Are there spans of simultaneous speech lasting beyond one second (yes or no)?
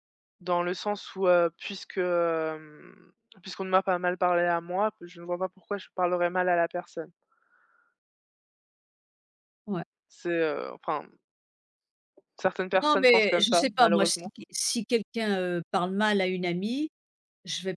yes